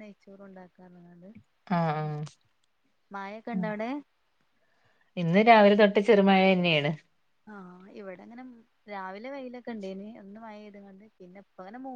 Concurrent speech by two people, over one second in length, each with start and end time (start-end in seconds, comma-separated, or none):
none